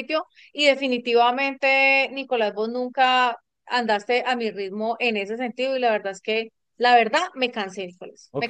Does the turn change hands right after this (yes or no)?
yes